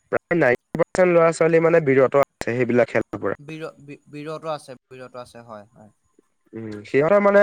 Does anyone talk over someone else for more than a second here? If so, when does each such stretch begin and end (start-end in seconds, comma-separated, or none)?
none